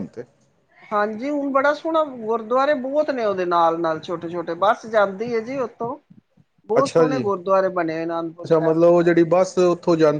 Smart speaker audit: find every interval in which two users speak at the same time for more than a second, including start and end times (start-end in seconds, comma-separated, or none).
none